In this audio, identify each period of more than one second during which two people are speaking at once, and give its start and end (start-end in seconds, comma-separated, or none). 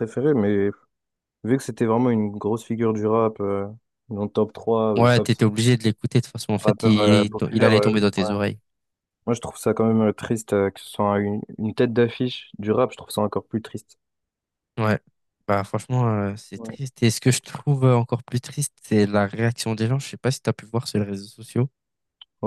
6.6-8.3